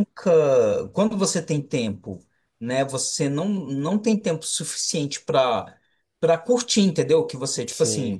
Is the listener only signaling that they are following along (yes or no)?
yes